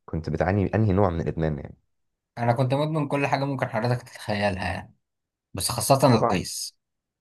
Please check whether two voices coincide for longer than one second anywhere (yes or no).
no